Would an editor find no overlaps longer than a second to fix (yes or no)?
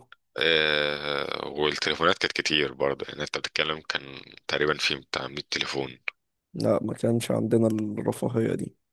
yes